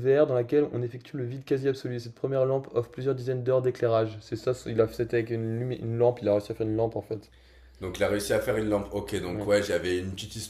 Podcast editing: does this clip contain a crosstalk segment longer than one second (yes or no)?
no